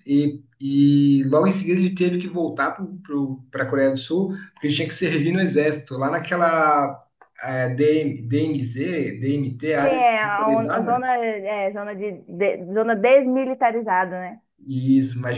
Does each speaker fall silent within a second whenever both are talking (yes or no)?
no